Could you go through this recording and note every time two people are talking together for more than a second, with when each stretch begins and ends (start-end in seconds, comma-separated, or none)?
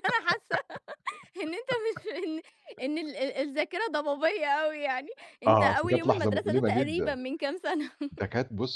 5.5-7.2